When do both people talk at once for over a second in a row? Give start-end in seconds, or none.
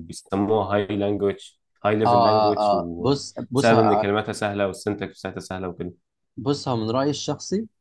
2.0-4.1